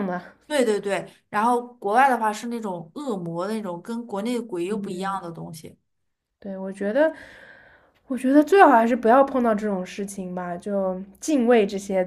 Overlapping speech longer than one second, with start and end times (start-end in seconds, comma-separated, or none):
none